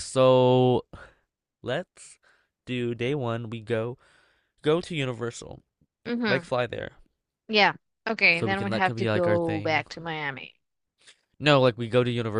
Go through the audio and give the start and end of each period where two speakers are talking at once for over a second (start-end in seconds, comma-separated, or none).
8.3-9.8